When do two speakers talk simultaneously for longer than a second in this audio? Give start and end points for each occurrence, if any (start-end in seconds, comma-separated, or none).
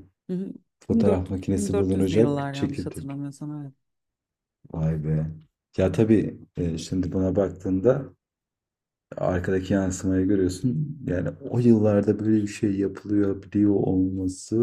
0.9-3.2